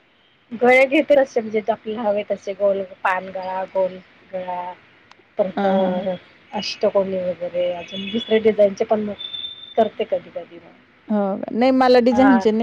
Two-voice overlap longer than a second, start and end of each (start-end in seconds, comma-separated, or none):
none